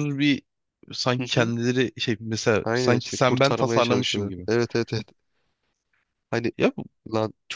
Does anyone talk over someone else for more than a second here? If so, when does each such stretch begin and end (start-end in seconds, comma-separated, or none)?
2.6-4.5